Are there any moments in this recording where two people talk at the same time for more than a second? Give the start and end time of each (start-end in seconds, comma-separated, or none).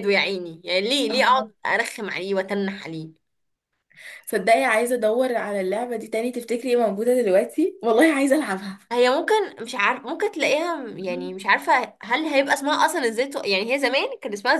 none